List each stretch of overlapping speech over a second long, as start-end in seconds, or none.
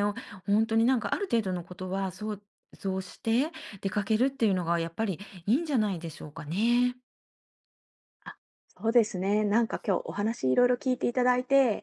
none